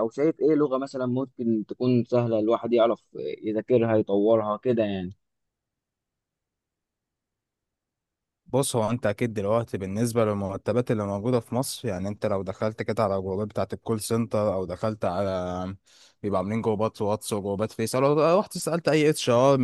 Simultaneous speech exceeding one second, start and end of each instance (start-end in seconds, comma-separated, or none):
none